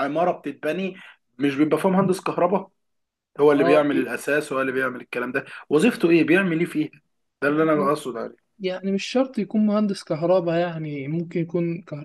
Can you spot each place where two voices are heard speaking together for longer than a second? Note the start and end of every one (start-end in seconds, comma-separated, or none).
none